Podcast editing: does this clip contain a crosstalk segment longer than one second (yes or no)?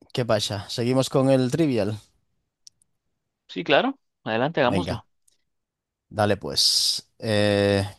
no